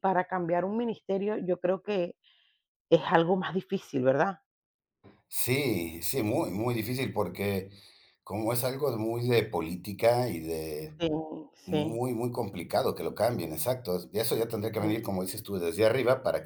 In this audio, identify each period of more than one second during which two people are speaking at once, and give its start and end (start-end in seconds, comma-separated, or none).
none